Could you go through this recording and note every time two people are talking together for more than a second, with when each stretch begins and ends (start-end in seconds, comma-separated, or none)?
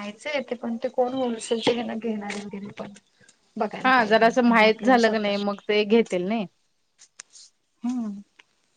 3.9-5.3